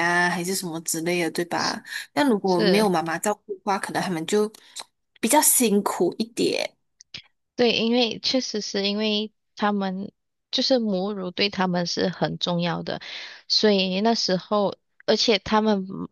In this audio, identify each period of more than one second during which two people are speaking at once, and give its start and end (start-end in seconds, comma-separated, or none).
none